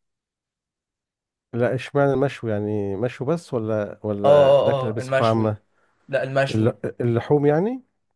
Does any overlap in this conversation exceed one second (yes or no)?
yes